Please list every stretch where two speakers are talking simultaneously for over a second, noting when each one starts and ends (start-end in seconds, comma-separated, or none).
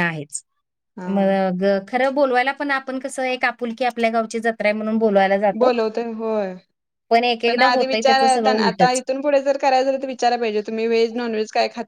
7.5-9.0